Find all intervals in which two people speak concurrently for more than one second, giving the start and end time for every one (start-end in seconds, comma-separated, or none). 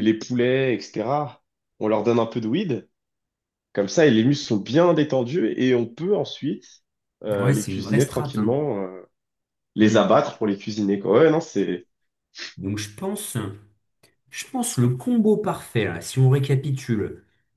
7.3-8.6